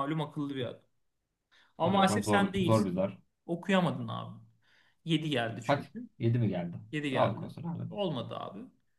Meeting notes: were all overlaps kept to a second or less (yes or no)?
no